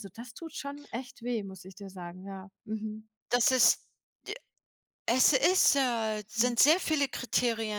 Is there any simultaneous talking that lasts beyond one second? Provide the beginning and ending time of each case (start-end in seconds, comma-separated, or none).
none